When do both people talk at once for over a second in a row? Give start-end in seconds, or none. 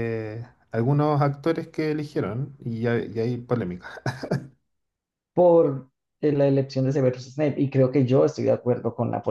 none